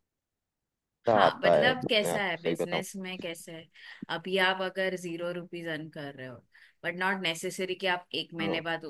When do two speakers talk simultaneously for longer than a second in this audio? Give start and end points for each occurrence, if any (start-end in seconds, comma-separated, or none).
1.1-2.8